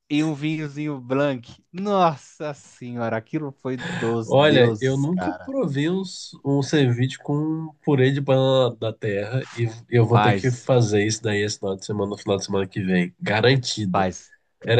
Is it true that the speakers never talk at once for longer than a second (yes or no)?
no